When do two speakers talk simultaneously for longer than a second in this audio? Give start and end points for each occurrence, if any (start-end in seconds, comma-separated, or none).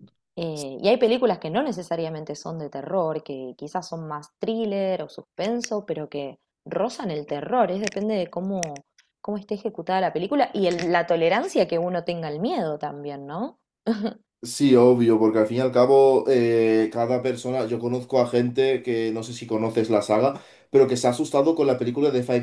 none